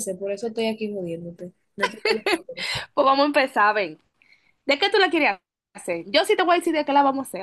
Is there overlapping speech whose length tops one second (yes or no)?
no